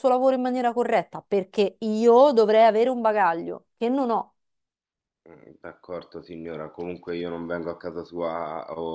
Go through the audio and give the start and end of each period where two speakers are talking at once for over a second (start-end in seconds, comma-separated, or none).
none